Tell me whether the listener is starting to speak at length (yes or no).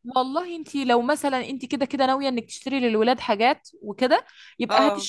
no